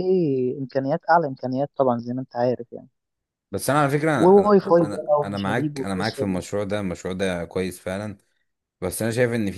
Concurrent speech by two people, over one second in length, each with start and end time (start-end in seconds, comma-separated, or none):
4.2-6.4